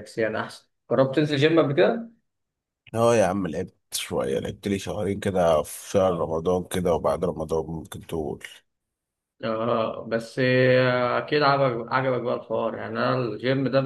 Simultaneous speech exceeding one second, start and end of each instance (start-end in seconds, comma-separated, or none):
none